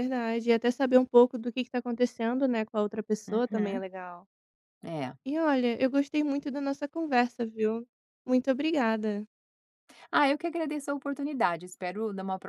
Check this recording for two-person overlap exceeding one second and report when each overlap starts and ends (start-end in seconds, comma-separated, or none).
none